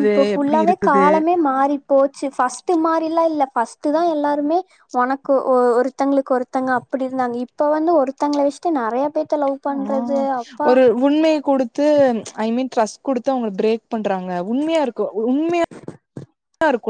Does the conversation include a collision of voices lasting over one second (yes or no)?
no